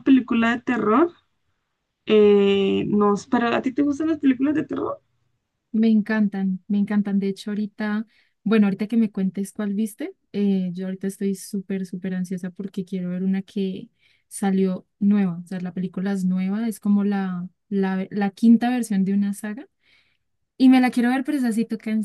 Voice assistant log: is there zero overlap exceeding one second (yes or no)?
yes